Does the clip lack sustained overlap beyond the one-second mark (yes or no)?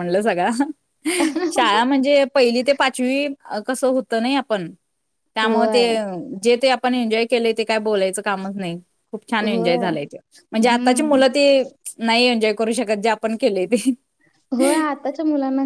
yes